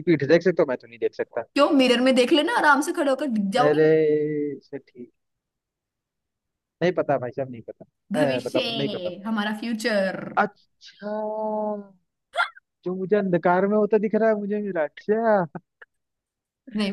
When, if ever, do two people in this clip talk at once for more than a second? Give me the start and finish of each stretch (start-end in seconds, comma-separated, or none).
none